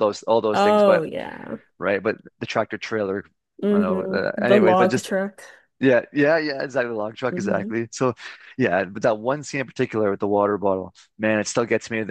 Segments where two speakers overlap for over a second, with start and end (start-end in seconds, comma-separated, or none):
3.7-5.1